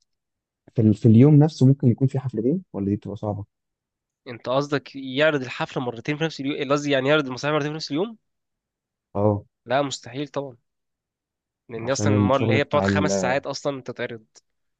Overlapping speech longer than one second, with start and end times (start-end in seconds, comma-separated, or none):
11.8-13.1